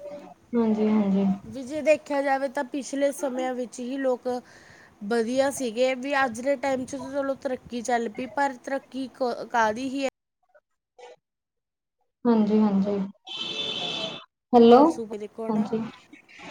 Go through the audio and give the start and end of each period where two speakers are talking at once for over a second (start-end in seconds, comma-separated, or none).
none